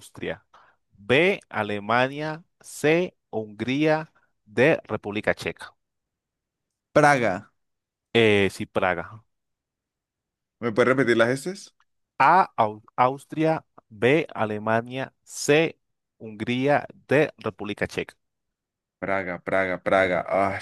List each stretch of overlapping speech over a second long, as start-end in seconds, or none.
none